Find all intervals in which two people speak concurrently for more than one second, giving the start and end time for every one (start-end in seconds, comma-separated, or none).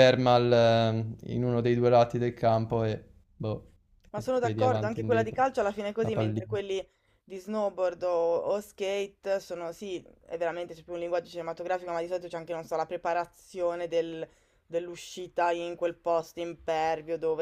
4.1-5.4